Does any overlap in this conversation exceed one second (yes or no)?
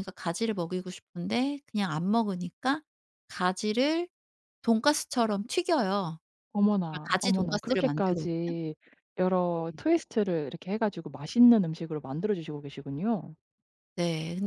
yes